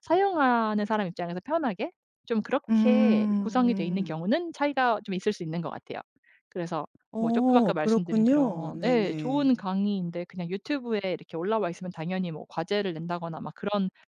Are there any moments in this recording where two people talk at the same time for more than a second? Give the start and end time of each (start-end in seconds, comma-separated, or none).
2.7-4.1, 7.1-9.5